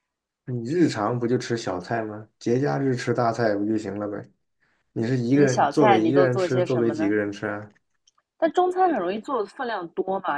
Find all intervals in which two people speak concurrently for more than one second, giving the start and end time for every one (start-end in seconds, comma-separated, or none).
5.3-7.2